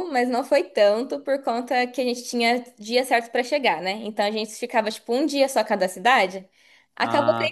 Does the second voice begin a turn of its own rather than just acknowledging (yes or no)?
no